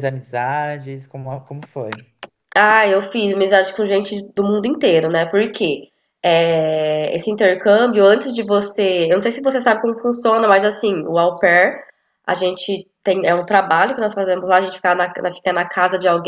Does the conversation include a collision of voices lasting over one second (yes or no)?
no